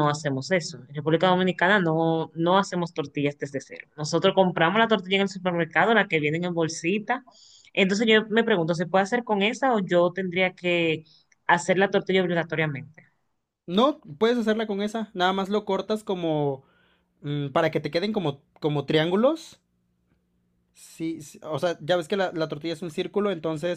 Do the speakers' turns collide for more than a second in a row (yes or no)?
no